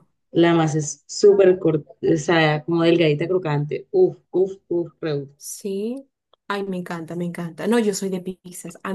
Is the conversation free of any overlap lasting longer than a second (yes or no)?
yes